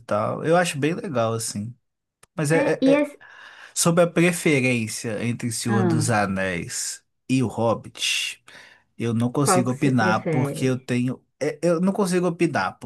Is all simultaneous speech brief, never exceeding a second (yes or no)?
no